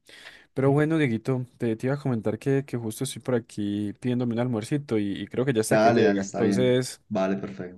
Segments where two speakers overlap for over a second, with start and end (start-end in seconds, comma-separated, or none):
5.7-7.0